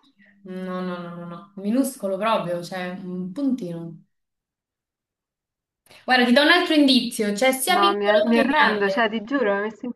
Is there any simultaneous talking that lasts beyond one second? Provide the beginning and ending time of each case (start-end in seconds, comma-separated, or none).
7.8-9.1